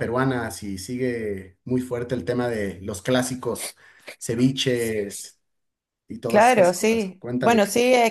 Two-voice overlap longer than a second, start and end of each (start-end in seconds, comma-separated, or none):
6.3-7.6